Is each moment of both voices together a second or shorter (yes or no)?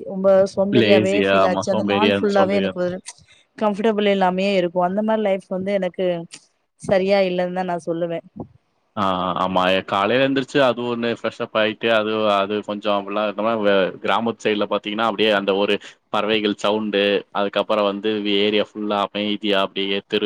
no